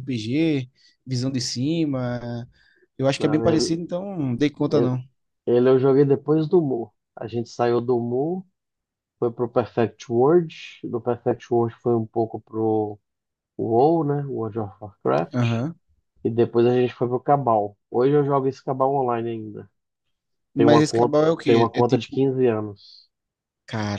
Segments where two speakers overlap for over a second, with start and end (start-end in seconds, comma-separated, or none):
20.6-22.2